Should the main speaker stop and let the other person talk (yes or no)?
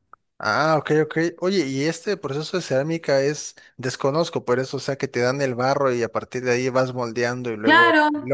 yes